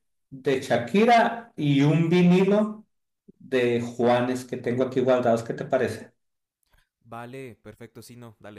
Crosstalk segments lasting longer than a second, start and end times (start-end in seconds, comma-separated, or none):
none